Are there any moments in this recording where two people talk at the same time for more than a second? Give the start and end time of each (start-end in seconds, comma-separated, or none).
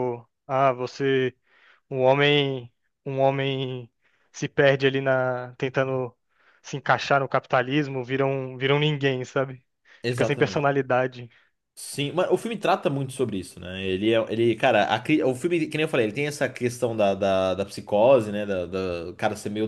none